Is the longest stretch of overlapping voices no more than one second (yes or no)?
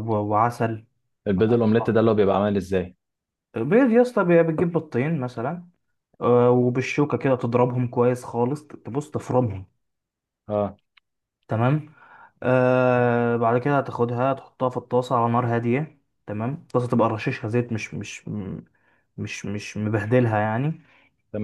yes